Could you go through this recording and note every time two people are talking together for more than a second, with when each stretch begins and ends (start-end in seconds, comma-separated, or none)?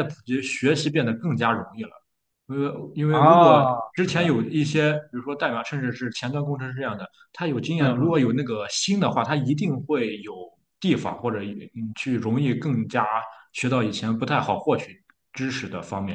3.1-4.8